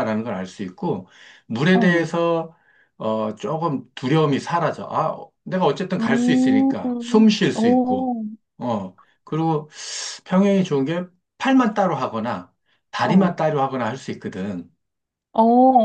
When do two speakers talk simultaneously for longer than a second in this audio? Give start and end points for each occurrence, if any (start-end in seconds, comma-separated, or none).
6.0-8.1